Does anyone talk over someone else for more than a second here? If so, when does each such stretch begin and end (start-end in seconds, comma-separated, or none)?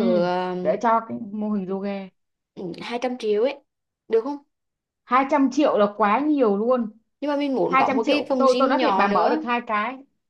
7.7-9.4